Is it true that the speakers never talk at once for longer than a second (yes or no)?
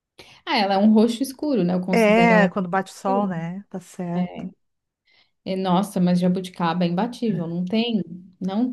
no